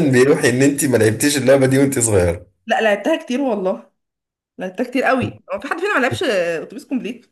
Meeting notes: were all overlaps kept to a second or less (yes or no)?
yes